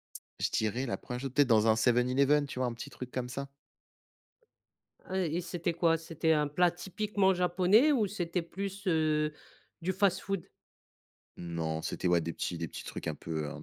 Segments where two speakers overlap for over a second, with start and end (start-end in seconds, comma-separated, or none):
none